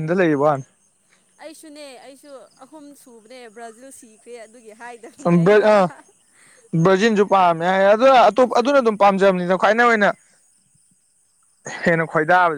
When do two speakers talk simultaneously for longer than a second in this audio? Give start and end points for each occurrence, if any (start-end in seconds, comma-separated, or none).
none